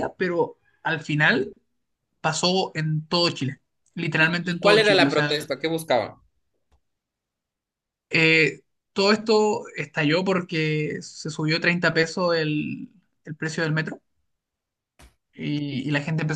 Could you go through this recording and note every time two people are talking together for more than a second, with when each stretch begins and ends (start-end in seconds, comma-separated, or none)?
4.2-5.5